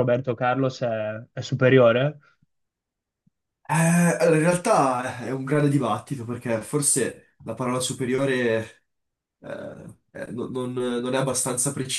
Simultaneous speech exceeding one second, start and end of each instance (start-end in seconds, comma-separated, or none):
none